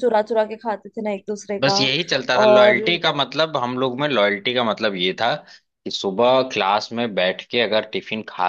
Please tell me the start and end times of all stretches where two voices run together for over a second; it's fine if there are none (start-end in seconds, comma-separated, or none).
none